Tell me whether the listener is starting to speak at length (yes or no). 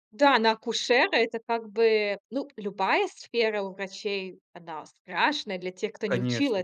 no